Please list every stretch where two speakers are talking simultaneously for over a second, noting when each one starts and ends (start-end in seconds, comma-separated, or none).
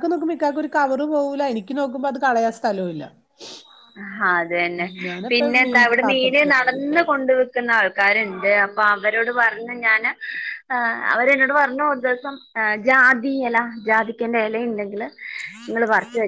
5.3-7.0